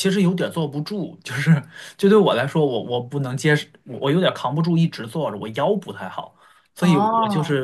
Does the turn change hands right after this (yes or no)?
no